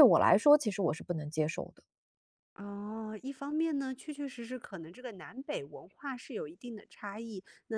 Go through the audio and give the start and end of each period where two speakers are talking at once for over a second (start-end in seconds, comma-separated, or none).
none